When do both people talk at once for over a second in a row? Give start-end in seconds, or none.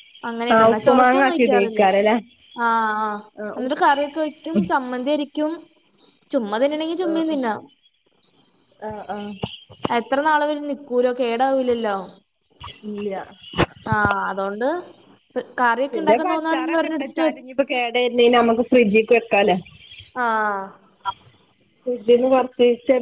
15.9-17.3